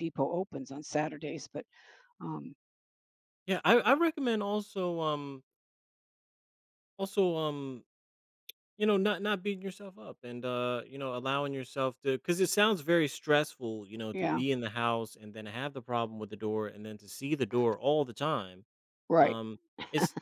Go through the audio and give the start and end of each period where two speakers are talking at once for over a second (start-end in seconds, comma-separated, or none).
none